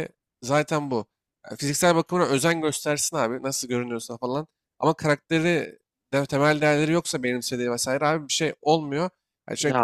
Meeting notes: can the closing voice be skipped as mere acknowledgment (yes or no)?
yes